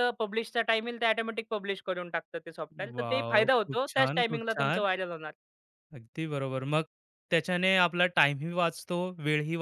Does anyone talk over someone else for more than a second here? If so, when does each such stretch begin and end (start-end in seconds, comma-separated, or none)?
3.0-4.8